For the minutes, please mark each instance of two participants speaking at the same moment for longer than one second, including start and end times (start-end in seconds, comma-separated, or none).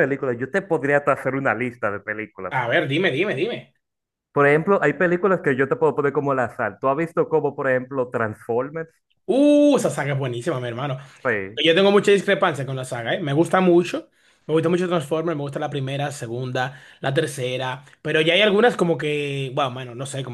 none